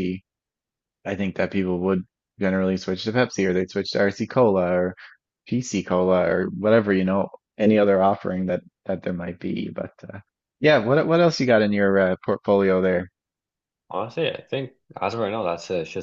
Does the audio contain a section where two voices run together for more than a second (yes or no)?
no